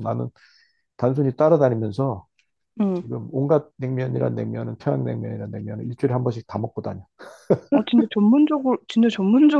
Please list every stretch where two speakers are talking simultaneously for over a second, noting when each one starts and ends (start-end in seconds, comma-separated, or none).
none